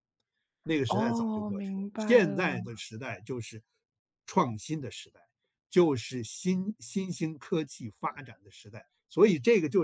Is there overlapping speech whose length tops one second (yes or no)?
yes